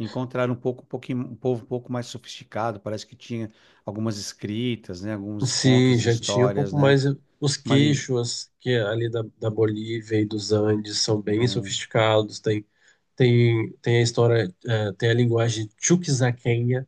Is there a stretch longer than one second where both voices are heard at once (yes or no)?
yes